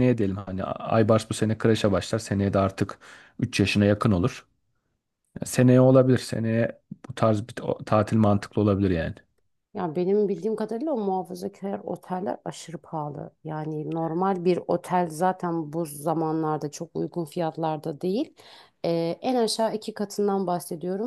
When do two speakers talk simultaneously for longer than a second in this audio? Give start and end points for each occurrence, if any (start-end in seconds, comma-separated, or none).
none